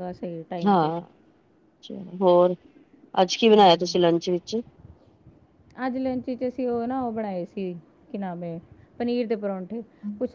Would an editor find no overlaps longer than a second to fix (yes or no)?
yes